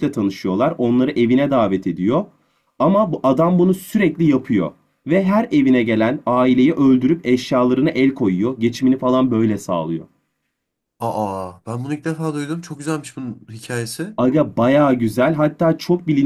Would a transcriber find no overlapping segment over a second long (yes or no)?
yes